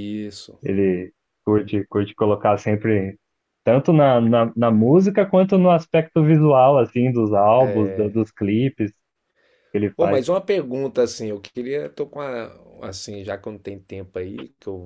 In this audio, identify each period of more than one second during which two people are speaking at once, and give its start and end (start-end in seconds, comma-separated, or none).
none